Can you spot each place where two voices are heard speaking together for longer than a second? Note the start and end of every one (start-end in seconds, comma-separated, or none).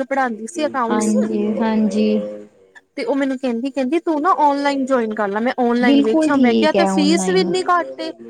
5.8-7.4